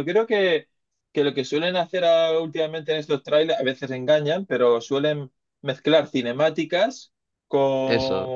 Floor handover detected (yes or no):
no